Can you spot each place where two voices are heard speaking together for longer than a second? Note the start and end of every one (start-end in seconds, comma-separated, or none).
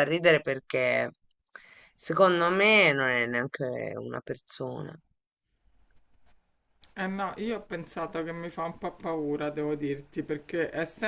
none